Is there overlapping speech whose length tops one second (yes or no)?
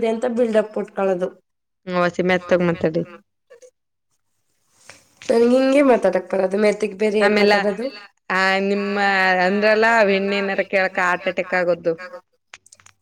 no